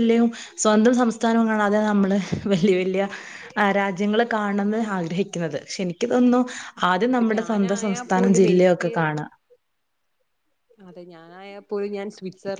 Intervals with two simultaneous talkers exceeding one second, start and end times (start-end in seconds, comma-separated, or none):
7.1-8.9